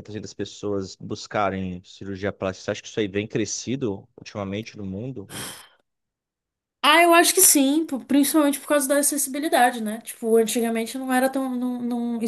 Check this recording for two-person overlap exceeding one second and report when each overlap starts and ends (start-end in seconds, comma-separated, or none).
none